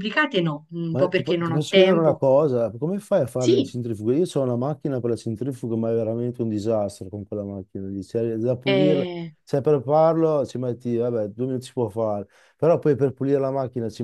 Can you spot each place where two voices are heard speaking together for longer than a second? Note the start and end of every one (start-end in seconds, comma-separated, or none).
0.9-2.2